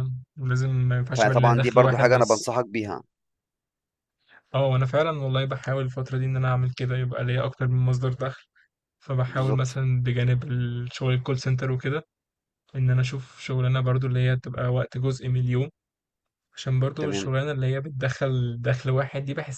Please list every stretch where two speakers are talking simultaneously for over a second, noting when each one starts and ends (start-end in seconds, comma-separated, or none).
1.2-2.5